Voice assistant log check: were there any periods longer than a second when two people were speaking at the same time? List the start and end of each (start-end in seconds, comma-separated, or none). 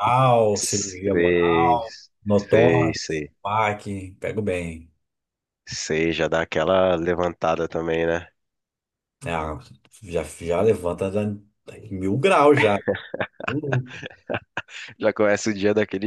0.5-1.8